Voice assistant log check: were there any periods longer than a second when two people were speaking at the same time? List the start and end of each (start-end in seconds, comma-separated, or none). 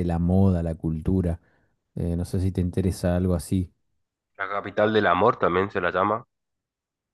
none